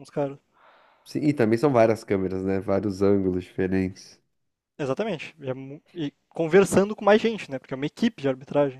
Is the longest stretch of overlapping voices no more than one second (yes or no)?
yes